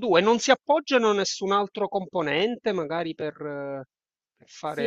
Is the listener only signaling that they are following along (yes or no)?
no